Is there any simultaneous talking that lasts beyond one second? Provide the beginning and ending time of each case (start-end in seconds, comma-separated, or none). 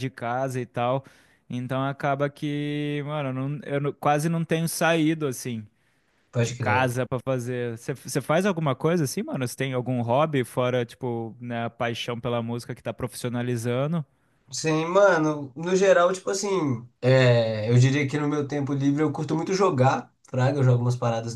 none